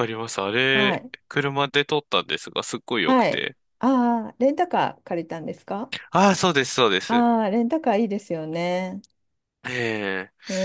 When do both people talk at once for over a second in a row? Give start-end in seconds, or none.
none